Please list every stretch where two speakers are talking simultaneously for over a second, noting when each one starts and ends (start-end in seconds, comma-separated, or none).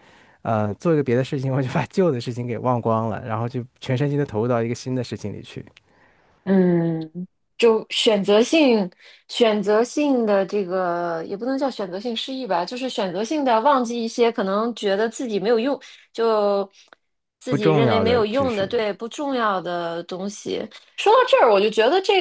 17.5-18.7